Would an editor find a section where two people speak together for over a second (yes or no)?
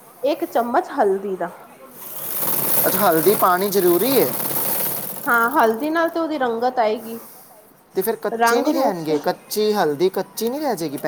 no